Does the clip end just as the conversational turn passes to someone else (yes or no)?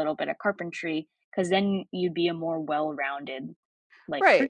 yes